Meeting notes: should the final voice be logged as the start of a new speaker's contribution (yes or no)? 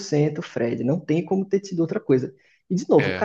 no